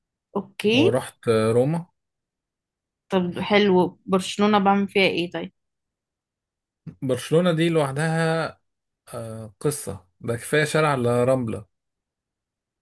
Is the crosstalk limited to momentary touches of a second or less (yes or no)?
yes